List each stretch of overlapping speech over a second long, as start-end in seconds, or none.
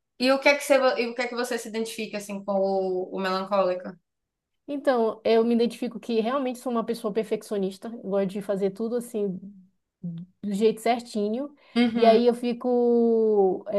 none